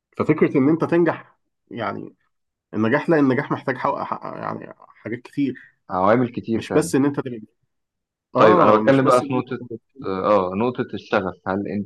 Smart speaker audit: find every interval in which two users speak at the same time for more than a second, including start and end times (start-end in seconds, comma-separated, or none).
8.4-9.6